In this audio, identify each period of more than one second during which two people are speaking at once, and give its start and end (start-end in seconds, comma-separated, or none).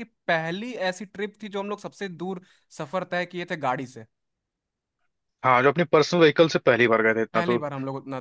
none